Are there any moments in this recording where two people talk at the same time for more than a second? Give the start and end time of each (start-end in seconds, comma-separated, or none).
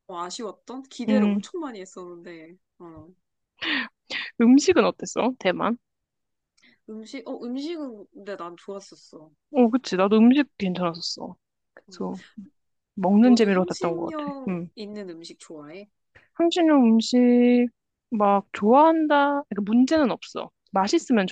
13.2-14.7